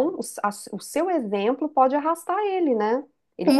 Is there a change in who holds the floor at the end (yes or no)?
yes